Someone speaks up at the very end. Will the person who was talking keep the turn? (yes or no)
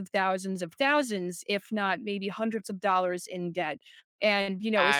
yes